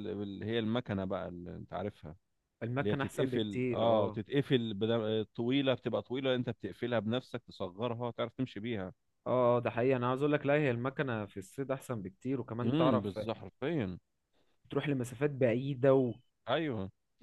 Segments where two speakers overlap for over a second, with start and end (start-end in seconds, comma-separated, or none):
2.8-4.2